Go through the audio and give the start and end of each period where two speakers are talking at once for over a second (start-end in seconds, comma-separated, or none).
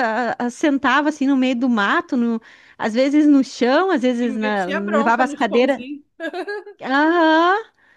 4.2-5.8